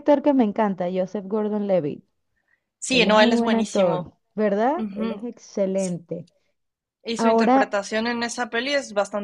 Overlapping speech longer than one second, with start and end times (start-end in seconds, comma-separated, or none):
2.9-4.1